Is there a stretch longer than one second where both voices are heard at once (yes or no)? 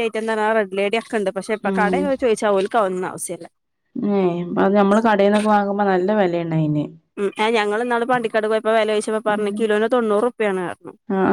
no